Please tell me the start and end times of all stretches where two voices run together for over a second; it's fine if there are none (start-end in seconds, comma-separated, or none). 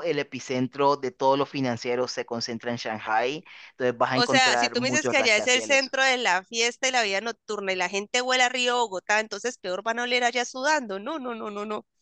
4.1-6.0